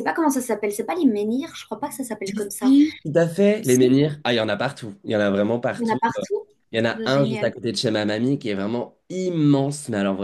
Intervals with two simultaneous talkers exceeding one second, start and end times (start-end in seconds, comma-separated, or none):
none